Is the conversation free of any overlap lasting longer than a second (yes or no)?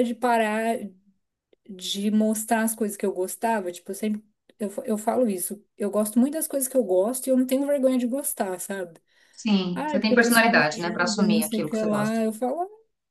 no